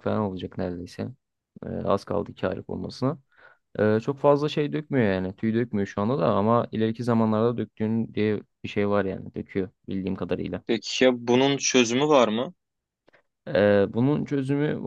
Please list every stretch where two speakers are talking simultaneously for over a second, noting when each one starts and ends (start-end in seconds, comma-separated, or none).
none